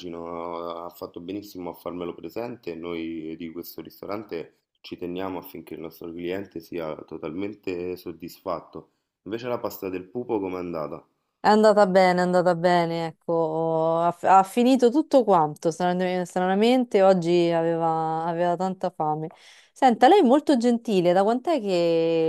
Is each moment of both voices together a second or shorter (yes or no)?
yes